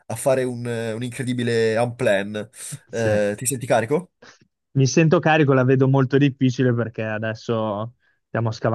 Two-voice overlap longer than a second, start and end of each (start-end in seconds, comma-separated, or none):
none